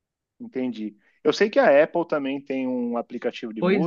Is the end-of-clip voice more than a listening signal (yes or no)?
no